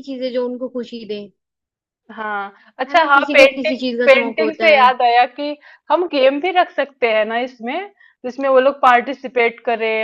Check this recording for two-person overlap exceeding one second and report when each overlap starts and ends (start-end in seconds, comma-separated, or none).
2.9-4.8